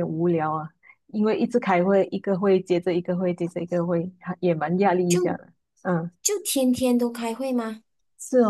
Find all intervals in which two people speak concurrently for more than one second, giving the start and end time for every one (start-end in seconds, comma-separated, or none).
none